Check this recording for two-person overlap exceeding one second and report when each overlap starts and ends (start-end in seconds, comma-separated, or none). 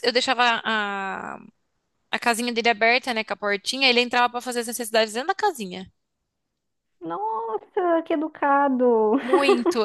none